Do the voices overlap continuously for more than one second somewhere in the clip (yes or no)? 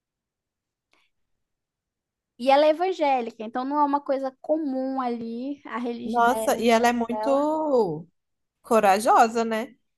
yes